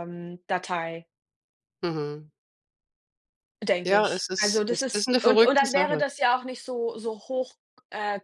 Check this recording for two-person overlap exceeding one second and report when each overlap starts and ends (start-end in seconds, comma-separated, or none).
3.8-6.0